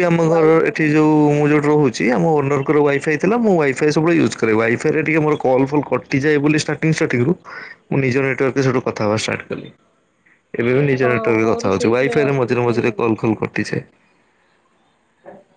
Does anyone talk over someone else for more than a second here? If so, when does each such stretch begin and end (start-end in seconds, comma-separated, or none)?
11.0-13.2